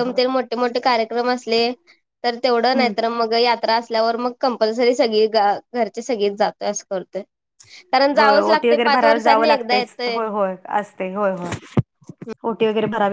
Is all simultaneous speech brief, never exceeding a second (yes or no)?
no